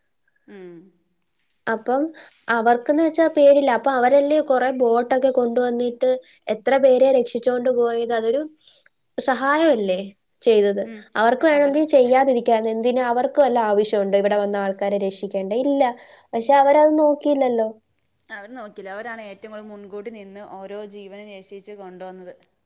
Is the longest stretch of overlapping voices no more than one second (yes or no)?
yes